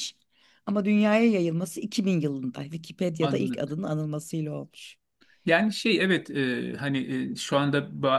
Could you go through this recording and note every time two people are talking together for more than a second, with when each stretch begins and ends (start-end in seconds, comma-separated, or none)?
none